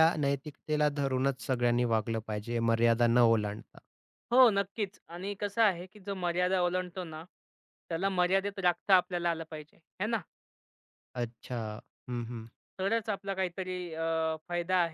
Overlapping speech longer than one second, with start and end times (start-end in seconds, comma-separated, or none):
none